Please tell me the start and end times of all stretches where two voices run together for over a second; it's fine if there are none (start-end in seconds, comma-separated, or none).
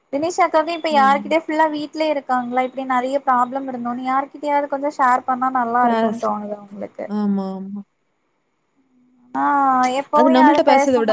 none